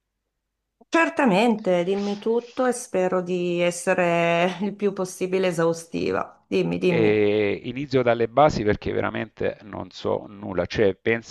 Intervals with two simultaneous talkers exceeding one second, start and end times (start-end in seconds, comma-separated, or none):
none